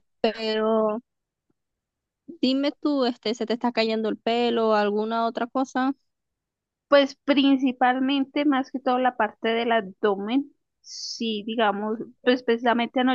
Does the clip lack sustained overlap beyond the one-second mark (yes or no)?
yes